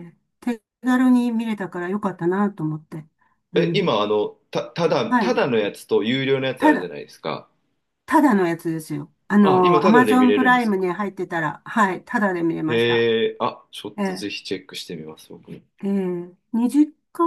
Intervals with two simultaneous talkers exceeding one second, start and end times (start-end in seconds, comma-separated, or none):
9.6-10.8